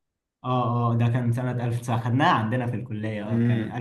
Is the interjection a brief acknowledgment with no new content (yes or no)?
no